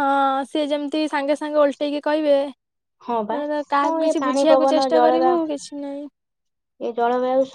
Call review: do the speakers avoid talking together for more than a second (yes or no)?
no